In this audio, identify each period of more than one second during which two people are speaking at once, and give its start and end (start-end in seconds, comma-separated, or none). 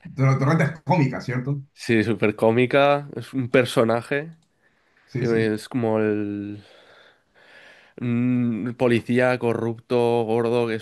none